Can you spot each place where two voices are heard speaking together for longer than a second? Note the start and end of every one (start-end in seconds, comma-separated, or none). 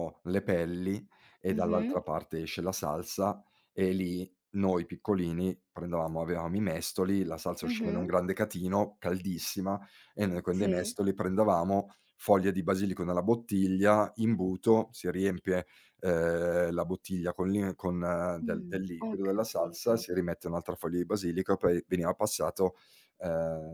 18.4-20.0